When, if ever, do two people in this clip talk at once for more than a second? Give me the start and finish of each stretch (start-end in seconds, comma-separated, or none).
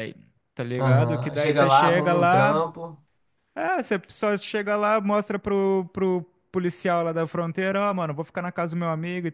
0.8-2.7